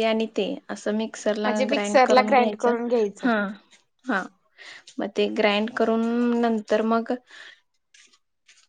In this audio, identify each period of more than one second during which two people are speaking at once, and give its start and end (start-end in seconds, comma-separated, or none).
1.4-3.3